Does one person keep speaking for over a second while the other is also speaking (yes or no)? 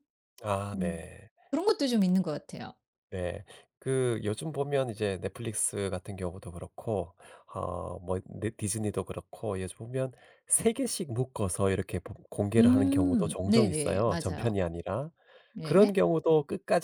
yes